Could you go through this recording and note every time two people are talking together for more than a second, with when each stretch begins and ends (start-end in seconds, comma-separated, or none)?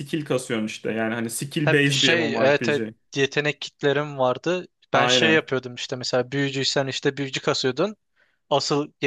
1.6-2.9